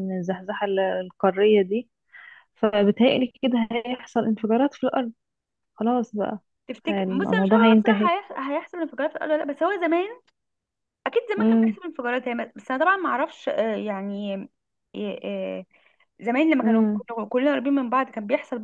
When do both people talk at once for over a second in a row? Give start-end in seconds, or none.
6.9-8.1